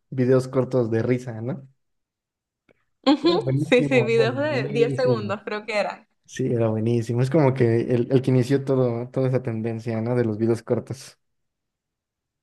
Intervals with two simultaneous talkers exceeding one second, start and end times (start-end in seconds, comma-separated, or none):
3.2-5.4